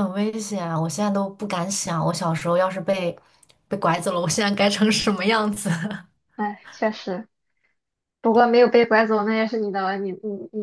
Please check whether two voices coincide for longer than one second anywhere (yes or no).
no